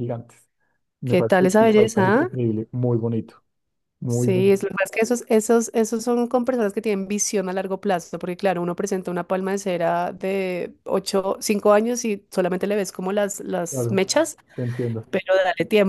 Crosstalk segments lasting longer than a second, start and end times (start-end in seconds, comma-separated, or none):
1.1-2.3